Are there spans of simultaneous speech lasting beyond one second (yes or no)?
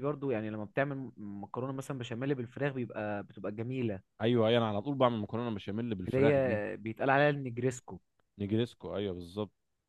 no